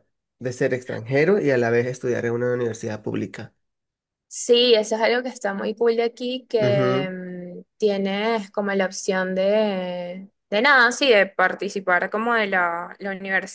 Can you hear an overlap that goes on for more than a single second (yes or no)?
no